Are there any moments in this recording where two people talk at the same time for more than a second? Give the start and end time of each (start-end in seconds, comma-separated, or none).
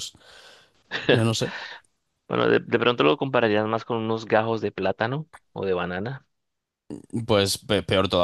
none